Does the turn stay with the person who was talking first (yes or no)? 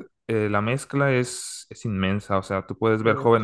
yes